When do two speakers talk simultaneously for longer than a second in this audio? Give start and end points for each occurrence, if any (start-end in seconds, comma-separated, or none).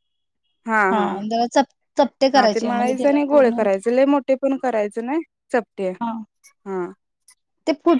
2.4-3.8